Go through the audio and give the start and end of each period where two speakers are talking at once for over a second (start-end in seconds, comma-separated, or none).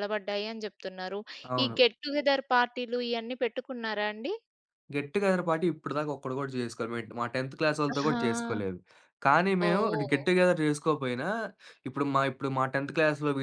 none